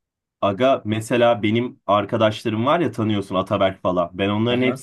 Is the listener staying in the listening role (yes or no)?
yes